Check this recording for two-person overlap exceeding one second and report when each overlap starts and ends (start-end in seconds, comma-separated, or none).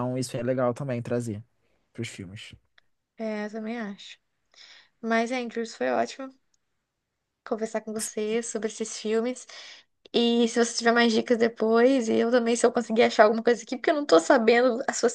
none